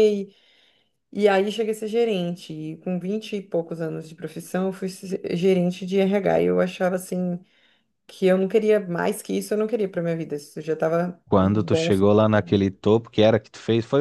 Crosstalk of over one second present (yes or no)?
yes